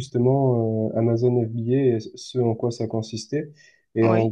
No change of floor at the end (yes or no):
yes